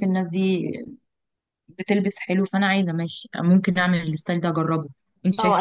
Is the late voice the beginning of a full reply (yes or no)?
yes